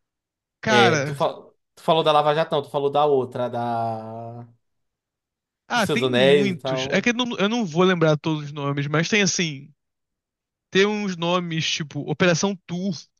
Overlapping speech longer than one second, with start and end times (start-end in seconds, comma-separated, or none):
5.7-7.1